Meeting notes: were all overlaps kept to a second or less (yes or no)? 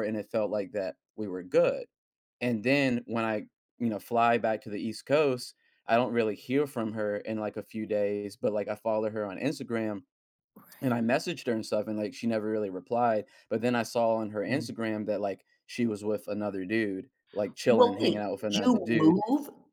no